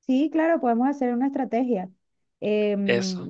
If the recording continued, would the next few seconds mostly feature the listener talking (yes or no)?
no